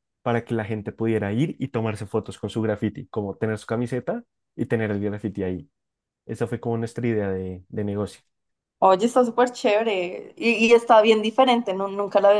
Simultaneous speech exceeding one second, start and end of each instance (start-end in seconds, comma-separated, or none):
none